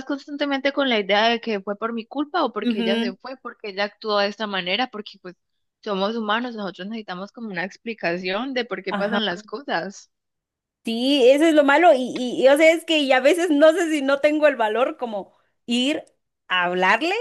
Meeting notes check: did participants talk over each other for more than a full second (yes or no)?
no